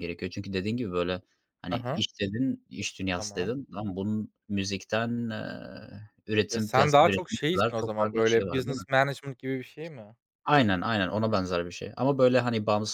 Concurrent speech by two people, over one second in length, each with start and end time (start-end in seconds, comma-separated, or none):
6.5-8.8